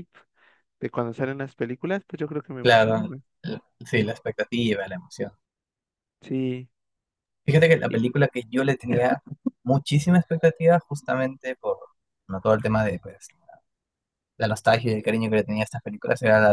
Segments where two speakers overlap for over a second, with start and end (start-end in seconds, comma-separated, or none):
none